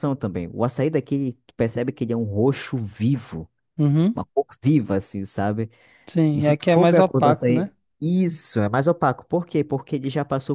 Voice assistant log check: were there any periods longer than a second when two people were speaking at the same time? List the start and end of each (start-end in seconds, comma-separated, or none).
6.3-7.7